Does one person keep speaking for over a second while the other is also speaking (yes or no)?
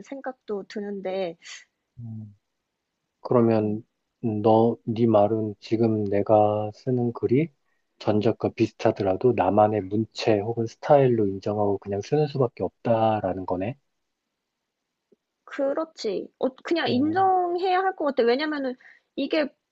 no